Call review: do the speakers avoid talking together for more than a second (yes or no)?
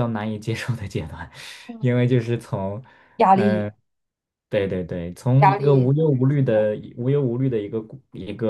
no